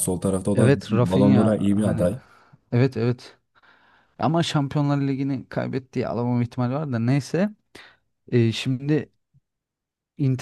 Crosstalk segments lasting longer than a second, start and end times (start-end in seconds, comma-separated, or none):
0.5-2.1